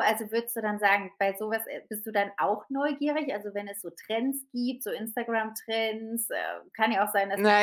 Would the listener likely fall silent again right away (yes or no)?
no